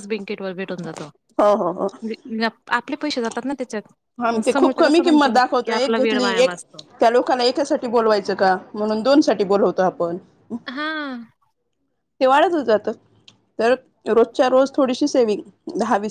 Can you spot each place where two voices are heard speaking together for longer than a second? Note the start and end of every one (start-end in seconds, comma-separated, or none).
4.3-6.5